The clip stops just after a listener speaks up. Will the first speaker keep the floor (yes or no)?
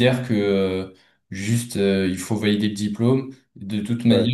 yes